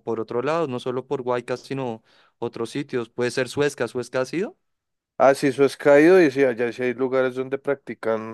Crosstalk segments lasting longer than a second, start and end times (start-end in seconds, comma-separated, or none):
none